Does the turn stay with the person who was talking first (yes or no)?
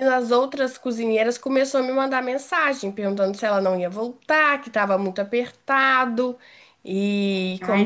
no